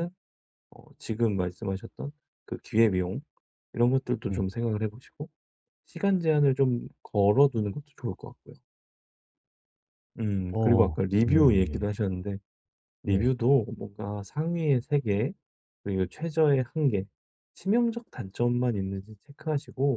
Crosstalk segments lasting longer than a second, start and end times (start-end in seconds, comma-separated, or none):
10.5-11.8